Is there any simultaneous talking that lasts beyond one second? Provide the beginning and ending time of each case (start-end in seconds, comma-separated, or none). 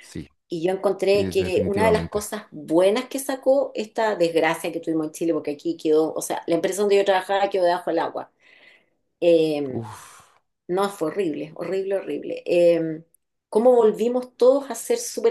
1.1-2.3